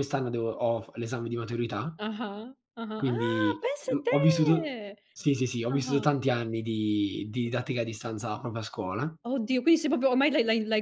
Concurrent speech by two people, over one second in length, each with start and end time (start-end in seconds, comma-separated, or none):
3.0-4.7